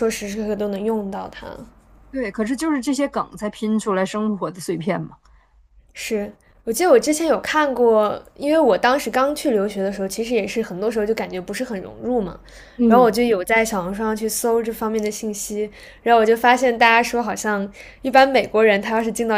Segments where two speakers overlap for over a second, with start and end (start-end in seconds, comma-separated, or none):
none